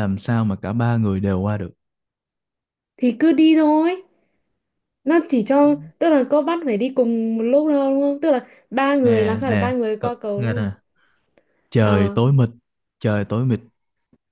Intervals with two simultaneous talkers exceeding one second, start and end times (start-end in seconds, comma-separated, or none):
9.0-10.7